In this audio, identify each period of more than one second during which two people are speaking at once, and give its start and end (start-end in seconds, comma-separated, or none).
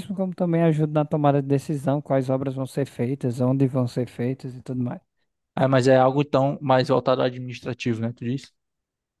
none